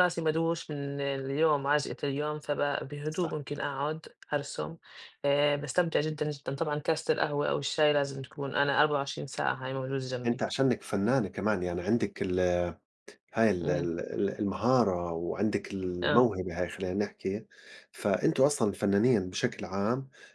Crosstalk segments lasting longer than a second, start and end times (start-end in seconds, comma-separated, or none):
none